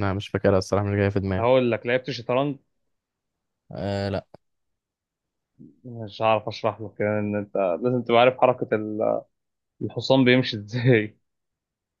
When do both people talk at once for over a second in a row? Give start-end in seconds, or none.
none